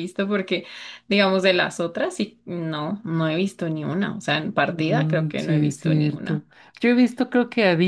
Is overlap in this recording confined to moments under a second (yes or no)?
no